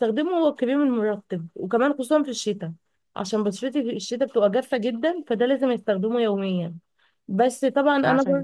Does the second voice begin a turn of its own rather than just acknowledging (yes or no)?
no